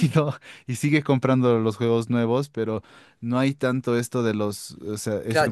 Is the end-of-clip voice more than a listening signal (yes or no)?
yes